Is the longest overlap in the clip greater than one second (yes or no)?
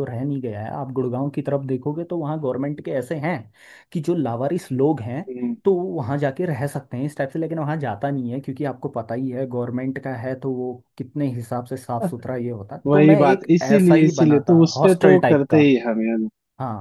yes